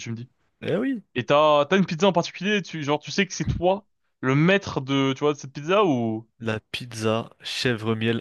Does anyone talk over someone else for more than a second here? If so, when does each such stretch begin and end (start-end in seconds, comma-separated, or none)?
none